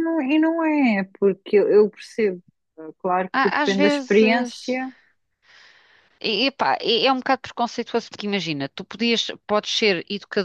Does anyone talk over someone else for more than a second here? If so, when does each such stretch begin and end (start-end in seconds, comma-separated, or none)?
3.3-4.8